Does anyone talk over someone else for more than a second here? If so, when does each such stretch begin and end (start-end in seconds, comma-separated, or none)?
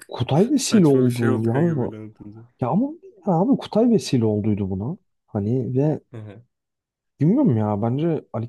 0.5-2.0